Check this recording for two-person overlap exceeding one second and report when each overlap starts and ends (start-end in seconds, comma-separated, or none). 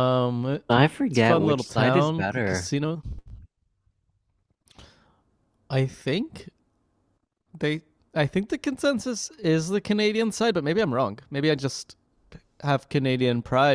1.1-2.7